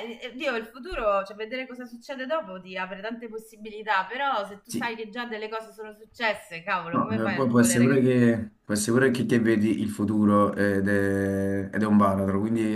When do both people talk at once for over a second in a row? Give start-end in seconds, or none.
6.9-8.1